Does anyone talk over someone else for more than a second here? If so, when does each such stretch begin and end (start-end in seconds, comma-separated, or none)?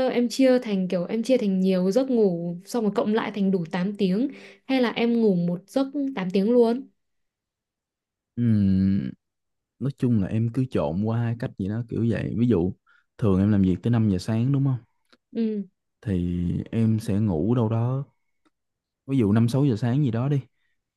none